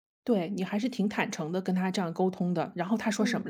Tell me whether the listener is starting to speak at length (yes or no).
yes